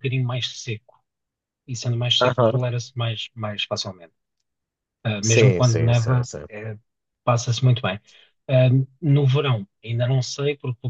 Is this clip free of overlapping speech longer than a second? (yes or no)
no